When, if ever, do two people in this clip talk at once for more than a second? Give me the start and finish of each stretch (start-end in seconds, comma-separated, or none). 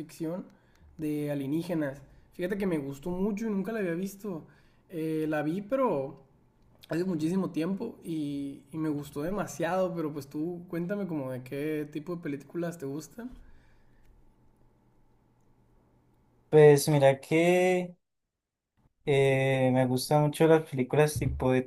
none